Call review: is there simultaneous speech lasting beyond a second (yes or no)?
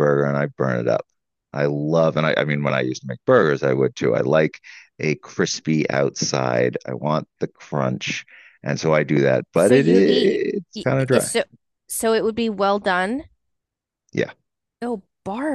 yes